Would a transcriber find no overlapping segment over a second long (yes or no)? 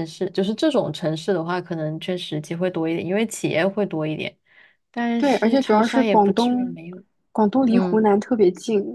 no